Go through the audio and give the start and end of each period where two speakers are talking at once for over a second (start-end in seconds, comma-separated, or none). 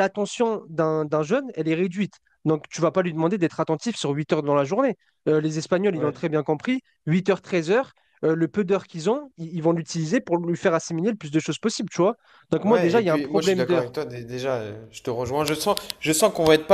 12.7-13.9